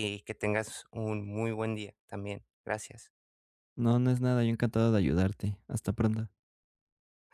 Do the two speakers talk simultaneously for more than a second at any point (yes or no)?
no